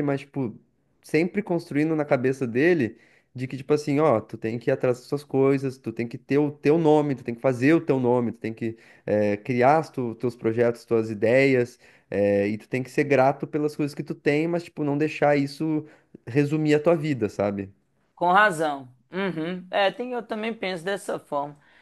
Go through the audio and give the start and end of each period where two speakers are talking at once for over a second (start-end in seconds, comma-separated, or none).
none